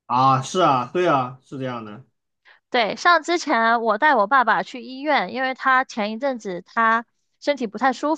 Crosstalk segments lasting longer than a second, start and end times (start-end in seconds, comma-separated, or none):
none